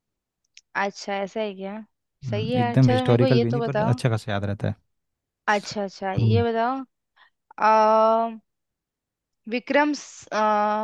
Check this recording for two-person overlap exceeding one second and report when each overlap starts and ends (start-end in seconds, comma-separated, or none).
2.3-4.0